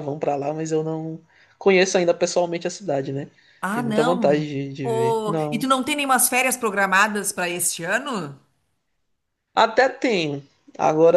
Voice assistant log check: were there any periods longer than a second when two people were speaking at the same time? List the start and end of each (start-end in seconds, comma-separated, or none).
3.7-5.7